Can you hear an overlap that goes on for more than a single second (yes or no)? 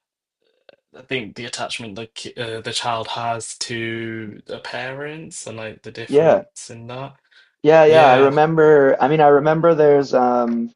no